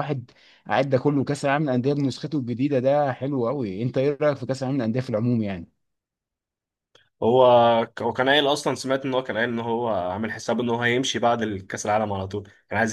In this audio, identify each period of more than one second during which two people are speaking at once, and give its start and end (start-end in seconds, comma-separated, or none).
none